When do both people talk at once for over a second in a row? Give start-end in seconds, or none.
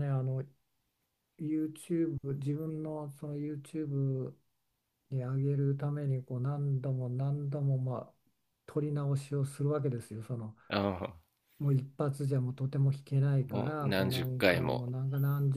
13.5-14.9